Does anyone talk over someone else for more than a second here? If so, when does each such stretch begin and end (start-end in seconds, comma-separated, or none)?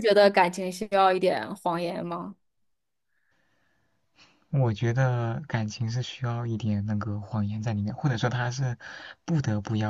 none